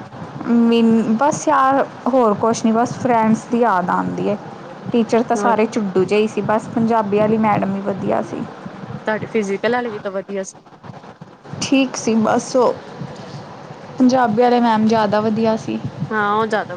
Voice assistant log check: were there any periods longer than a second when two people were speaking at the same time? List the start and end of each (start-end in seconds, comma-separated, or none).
none